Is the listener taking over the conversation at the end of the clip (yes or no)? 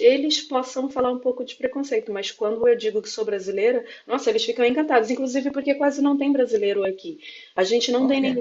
no